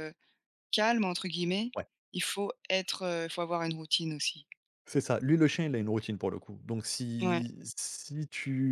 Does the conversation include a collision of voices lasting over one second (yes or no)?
no